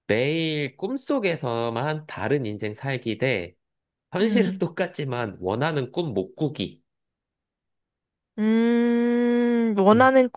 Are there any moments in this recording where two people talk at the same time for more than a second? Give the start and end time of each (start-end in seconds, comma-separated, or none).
none